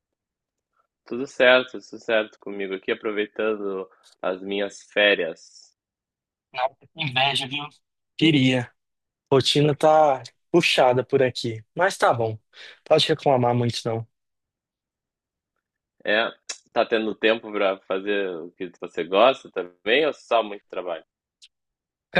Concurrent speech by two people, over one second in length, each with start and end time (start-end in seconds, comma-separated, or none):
none